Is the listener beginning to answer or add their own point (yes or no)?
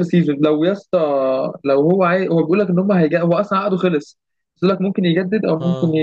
no